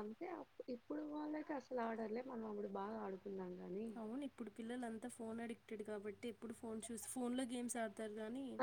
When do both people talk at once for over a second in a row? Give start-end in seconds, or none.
none